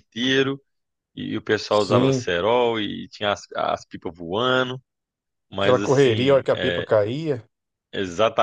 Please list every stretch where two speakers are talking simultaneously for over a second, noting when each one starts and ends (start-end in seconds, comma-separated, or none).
5.6-6.9